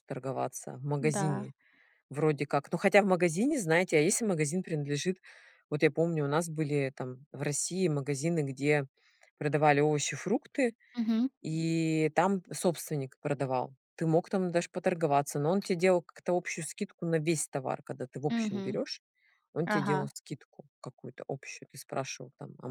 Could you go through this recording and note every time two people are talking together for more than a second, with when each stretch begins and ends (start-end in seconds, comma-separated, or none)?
none